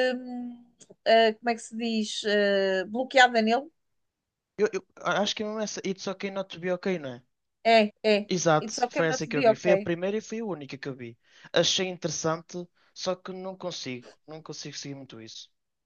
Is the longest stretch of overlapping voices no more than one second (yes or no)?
no